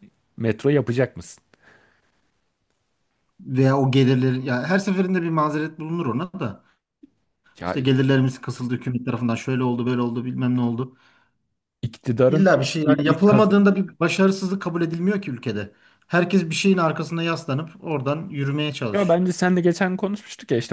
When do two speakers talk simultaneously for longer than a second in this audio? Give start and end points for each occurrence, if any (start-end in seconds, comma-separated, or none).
12.3-13.6